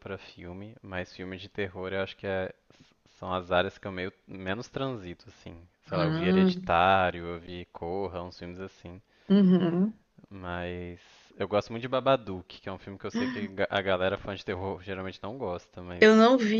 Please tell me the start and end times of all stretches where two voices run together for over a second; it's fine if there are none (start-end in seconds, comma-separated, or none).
none